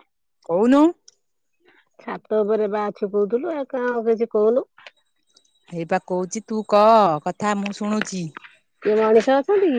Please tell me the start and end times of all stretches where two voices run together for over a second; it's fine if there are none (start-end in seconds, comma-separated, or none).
none